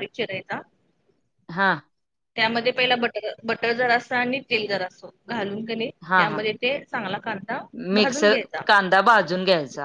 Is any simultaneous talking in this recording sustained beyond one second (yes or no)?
no